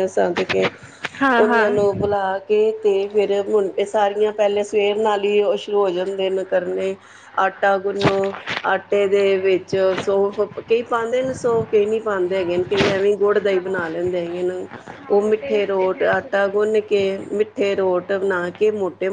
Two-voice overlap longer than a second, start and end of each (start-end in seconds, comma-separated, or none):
15.4-16.6